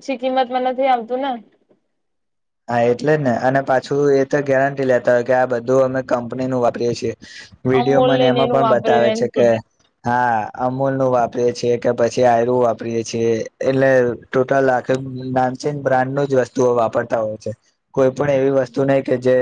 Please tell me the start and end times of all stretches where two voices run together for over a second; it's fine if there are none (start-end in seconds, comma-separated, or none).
7.8-9.2